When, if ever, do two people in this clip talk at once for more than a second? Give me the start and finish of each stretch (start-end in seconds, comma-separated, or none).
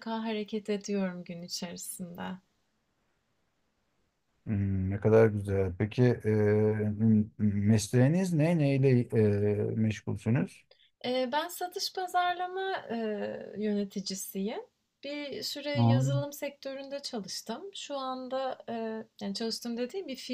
none